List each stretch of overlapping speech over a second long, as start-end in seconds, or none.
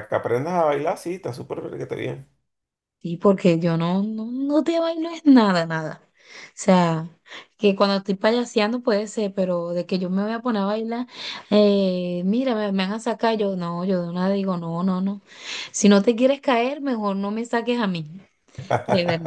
none